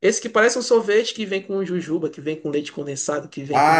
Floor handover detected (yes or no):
yes